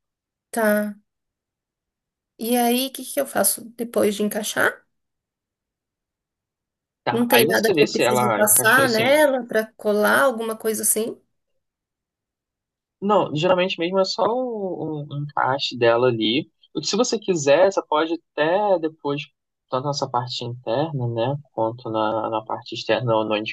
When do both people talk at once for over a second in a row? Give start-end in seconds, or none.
7.1-9.1